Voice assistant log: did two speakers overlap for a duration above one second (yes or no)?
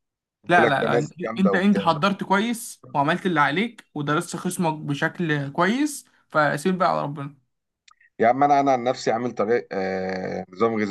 yes